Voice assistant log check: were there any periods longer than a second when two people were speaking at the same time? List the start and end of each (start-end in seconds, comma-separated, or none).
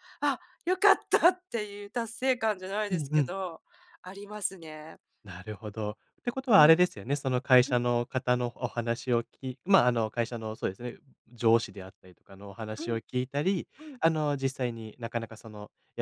none